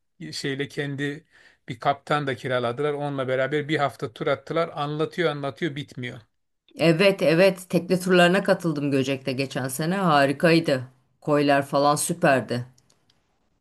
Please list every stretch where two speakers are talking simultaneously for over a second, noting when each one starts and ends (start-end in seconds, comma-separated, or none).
none